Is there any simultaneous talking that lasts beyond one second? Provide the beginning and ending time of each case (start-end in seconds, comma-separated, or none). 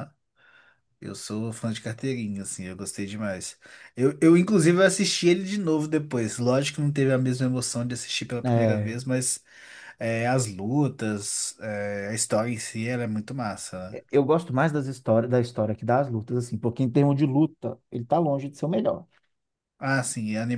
none